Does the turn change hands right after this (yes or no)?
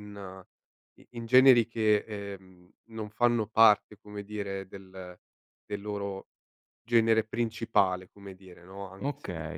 yes